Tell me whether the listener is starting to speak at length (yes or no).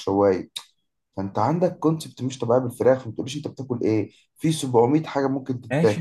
yes